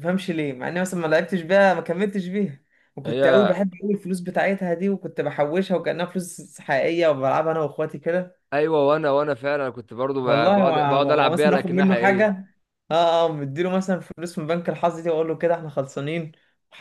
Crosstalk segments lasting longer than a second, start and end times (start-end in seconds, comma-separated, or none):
10.2-12.3